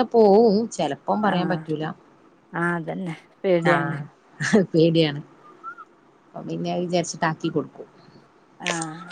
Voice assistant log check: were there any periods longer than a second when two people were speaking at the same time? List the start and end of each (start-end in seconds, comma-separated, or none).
none